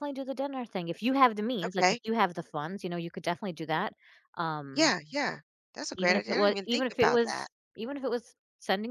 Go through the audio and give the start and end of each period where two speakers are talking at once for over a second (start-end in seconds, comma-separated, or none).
6.0-7.5